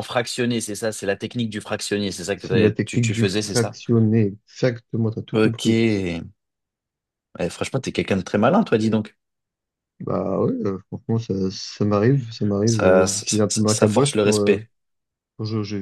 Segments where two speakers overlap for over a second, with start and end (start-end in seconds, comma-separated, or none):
2.4-3.8, 12.7-14.7